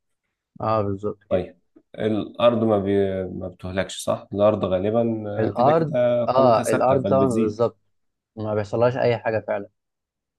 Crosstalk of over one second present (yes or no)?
yes